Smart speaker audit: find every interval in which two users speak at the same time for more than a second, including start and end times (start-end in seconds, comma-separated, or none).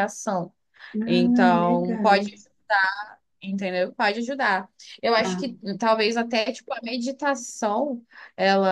1.1-2.2